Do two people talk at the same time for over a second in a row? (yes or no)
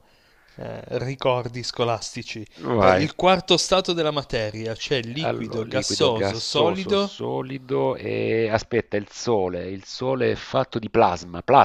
yes